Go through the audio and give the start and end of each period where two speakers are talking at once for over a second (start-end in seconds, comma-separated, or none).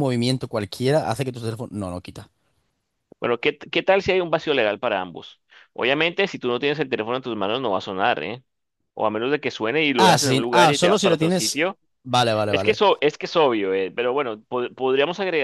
10.0-11.7